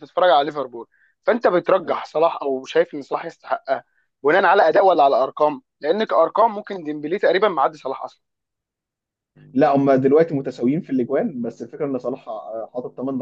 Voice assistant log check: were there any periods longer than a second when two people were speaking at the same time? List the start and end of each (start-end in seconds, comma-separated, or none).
none